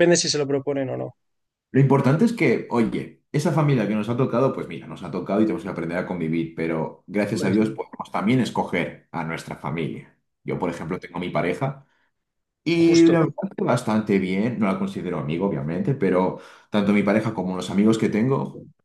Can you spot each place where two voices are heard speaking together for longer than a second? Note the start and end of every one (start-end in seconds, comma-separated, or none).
none